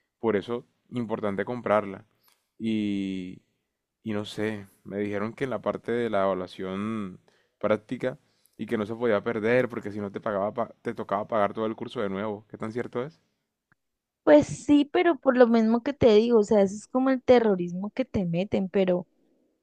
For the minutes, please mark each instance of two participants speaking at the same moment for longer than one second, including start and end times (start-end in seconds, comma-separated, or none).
none